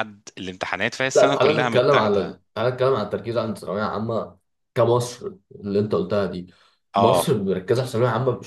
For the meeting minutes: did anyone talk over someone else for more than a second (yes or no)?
yes